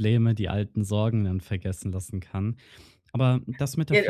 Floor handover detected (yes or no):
yes